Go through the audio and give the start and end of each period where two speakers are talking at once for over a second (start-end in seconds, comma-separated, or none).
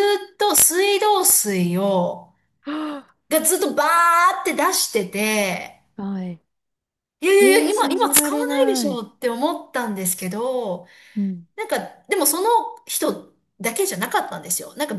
7.4-9.0